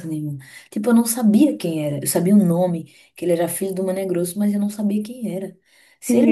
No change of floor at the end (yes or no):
yes